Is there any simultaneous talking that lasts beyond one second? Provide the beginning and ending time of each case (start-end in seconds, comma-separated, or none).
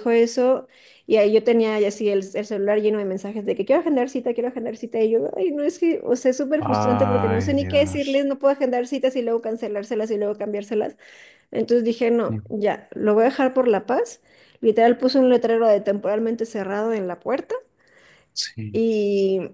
6.6-8.3